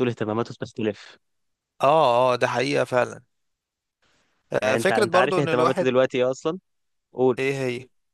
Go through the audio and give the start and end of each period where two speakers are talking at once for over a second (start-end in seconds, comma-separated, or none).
4.6-6.0